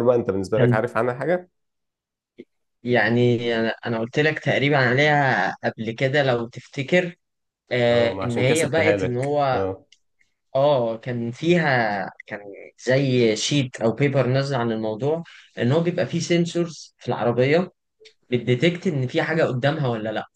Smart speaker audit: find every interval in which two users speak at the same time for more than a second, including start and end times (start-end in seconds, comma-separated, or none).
7.9-9.6